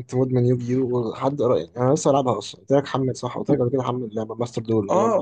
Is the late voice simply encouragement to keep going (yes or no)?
no